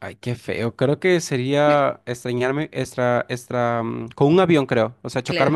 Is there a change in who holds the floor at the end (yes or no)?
no